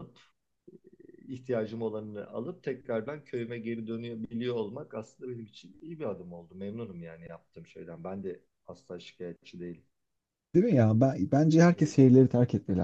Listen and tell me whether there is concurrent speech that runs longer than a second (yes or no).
no